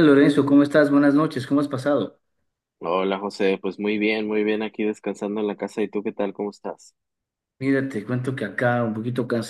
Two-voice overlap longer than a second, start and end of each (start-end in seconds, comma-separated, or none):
none